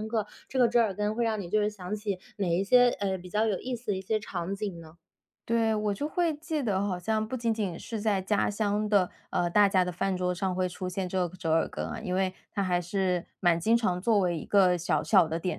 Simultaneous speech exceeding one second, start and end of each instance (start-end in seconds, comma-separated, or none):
none